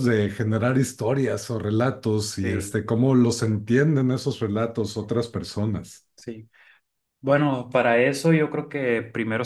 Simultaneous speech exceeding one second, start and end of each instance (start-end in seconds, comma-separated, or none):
none